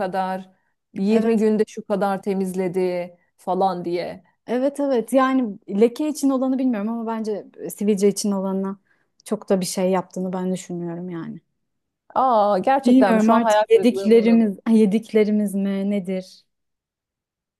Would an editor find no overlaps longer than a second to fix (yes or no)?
no